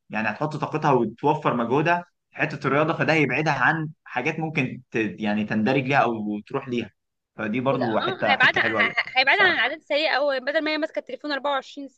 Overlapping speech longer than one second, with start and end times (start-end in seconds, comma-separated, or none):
7.7-9.6